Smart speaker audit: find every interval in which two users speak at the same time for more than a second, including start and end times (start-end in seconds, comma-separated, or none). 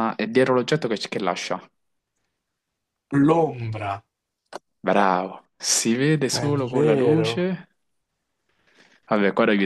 6.3-7.5